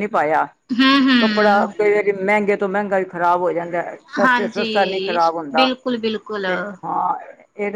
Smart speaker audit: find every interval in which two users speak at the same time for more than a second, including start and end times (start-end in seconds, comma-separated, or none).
4.2-5.7